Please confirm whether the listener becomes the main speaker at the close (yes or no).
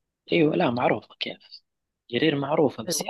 no